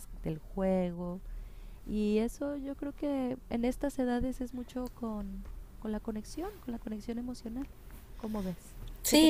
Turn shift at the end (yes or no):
yes